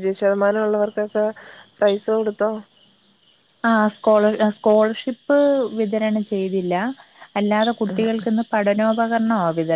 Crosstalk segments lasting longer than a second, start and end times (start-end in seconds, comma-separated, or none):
none